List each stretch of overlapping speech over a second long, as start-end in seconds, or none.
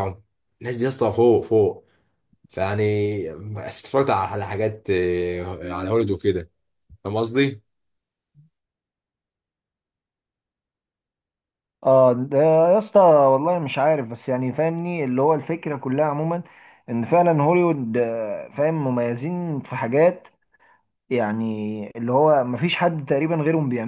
none